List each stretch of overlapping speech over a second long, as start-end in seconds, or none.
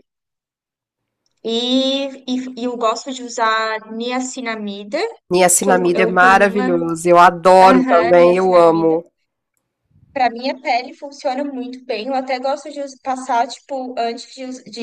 5.6-6.8, 7.6-9.0